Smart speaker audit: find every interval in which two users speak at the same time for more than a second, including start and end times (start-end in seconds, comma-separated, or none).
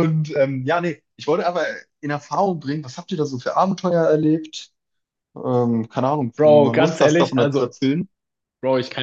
6.3-7.8